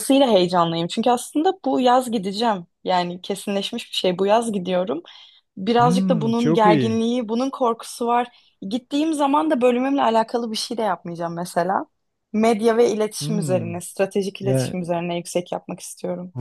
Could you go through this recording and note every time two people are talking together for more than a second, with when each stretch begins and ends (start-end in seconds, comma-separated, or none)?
5.8-7.0